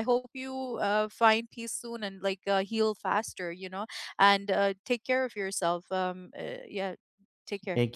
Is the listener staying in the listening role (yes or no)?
no